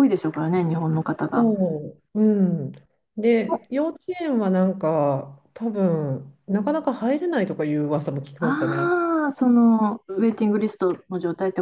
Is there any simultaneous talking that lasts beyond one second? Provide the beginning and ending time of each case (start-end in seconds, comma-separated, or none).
none